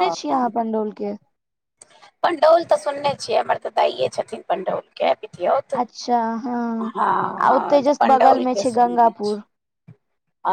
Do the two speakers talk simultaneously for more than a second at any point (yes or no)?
yes